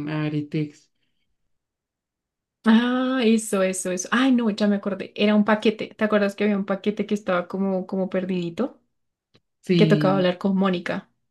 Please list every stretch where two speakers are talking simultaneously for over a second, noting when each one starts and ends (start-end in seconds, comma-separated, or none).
none